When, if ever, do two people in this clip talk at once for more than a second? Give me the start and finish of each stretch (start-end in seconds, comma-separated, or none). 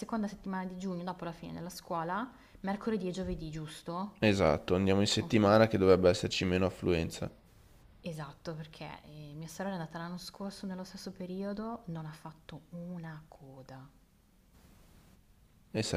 none